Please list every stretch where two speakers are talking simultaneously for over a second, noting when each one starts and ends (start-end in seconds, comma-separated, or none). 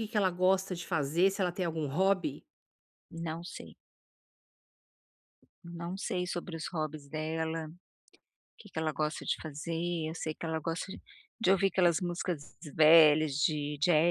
none